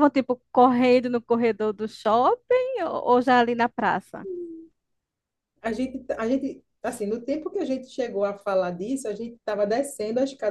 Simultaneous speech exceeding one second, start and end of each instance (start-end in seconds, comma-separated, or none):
none